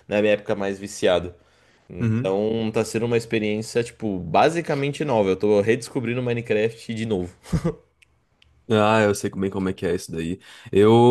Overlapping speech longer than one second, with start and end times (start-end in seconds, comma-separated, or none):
none